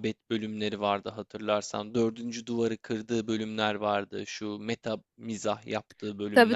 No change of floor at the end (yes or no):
no